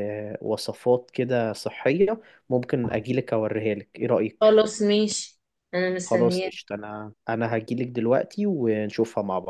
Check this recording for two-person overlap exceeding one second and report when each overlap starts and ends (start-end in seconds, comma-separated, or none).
none